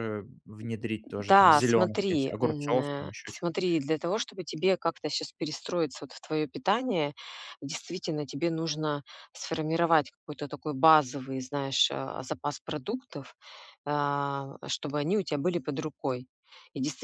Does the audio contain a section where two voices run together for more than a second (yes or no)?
yes